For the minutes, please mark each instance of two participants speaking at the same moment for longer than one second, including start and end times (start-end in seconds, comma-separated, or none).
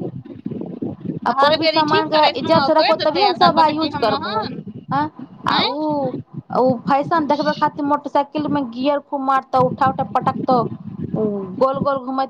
1.4-4.5